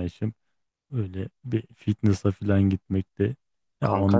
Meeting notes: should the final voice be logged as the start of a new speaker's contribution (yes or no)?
yes